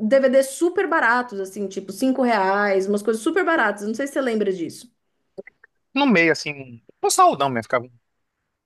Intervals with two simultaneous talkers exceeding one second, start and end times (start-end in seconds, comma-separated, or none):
none